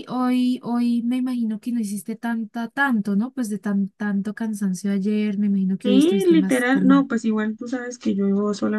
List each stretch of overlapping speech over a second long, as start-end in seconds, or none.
5.8-7.1